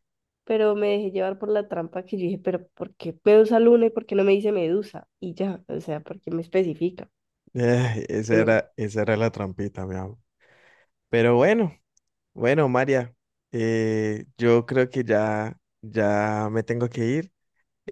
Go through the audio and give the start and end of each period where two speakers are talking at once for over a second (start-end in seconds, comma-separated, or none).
none